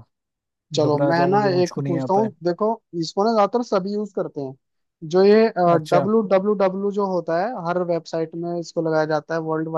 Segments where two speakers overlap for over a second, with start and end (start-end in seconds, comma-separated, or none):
0.8-2.3